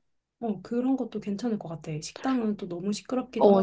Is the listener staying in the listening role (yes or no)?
no